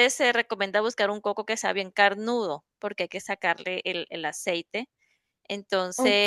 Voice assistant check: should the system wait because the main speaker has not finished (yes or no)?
no